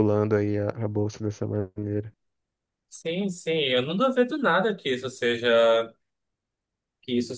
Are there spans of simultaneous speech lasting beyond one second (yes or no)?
no